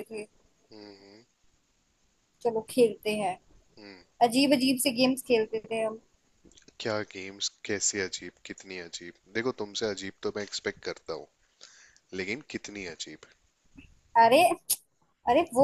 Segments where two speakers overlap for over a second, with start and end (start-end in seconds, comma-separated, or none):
none